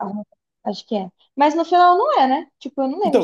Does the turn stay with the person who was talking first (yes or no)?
no